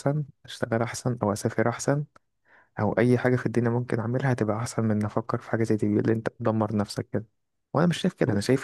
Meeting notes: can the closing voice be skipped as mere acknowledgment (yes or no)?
yes